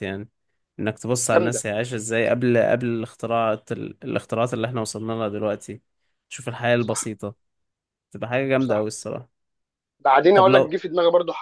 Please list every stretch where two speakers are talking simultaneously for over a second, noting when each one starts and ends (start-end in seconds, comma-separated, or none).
none